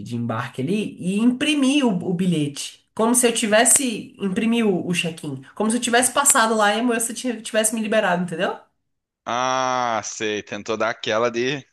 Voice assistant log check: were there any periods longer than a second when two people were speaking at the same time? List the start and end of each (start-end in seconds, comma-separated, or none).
none